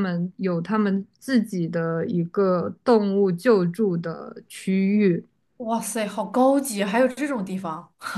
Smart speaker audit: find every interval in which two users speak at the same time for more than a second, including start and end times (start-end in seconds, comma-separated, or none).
none